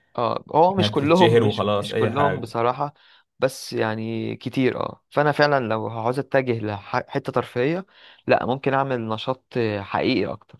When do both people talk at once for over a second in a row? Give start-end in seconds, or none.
0.7-2.5